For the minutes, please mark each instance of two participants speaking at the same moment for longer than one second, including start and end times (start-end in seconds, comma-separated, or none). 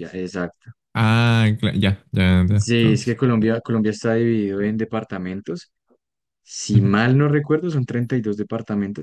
none